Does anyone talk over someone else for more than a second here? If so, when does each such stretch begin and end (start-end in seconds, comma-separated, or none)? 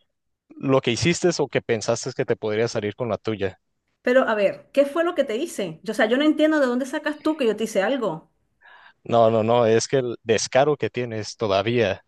none